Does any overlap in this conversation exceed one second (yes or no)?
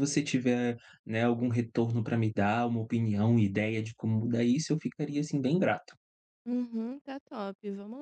no